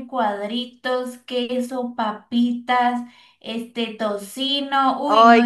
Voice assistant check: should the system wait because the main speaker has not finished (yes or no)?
no